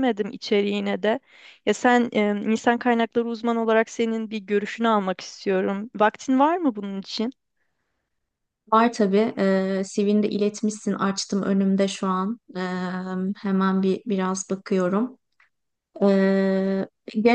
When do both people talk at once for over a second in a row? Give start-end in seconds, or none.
none